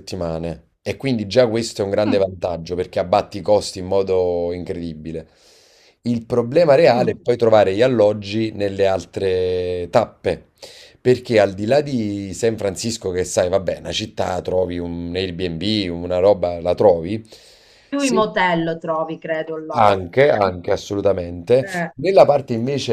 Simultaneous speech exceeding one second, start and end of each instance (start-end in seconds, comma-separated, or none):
none